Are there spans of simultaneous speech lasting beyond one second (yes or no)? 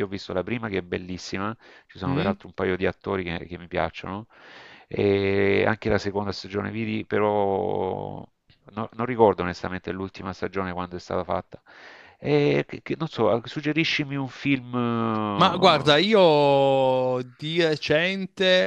no